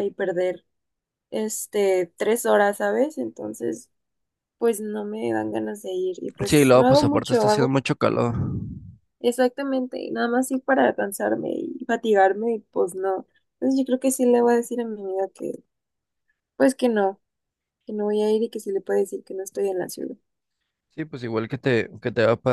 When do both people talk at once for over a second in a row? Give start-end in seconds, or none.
6.5-7.7